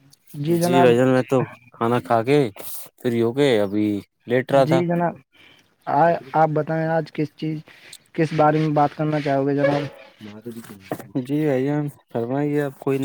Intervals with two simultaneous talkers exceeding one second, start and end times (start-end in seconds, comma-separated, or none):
none